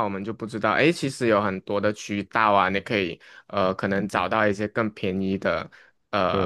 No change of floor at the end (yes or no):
no